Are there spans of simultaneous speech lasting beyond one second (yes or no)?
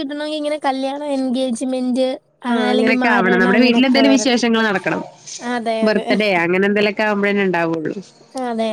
yes